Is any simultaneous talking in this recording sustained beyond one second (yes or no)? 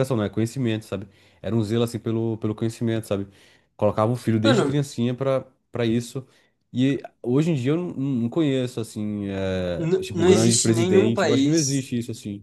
yes